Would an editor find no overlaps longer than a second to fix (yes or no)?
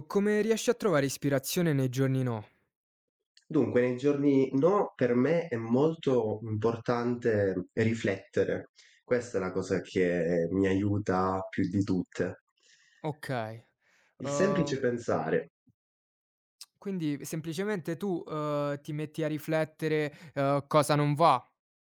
yes